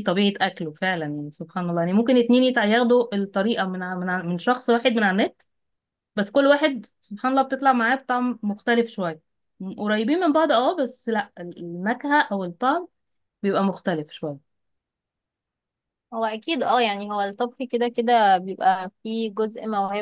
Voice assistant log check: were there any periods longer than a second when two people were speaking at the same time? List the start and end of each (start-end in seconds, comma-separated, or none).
none